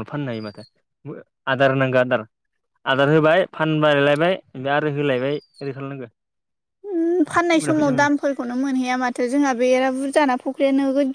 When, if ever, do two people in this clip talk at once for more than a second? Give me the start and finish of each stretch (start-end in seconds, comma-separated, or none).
none